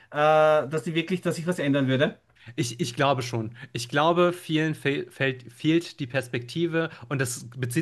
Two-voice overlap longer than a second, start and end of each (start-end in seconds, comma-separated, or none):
none